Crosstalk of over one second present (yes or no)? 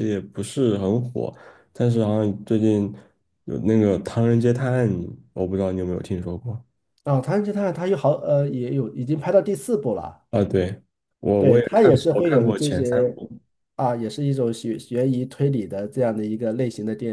yes